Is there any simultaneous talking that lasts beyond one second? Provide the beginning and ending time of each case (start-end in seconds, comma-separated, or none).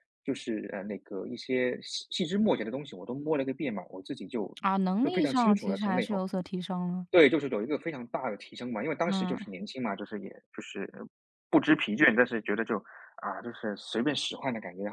5.0-6.2